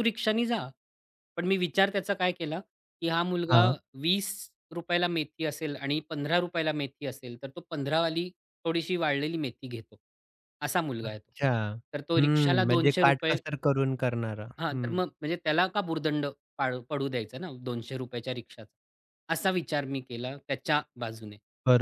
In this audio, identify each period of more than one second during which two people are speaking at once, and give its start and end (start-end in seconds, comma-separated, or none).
12.2-13.4